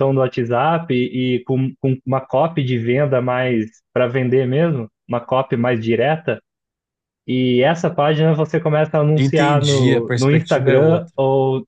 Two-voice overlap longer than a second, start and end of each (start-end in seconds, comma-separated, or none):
9.2-11.1